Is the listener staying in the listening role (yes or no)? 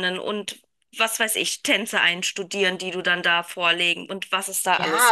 no